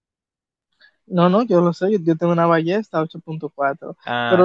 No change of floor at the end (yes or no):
yes